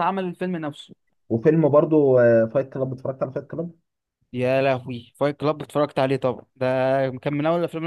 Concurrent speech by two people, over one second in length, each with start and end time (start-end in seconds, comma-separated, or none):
none